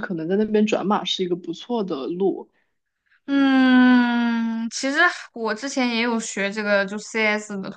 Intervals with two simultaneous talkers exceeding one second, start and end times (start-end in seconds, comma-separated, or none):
none